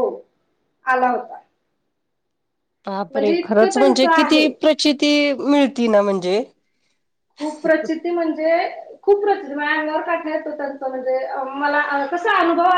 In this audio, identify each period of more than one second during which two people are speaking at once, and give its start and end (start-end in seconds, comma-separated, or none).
3.1-4.5